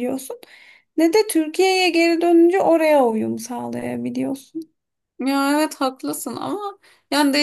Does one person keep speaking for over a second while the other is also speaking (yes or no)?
no